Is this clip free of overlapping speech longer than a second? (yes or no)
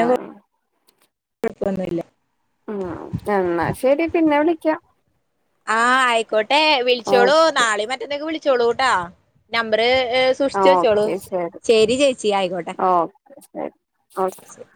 yes